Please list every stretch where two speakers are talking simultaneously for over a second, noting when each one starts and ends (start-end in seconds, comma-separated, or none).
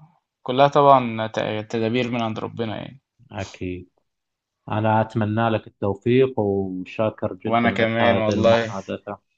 7.5-8.7